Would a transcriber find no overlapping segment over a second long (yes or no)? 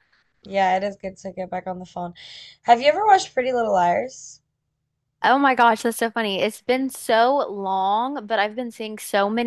yes